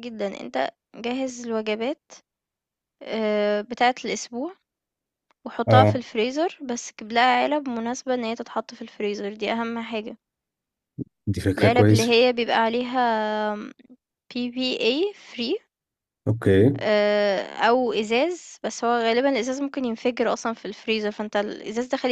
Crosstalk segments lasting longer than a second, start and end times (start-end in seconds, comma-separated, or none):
none